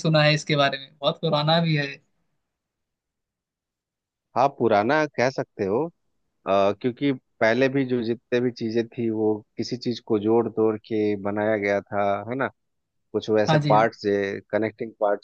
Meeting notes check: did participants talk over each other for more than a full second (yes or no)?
no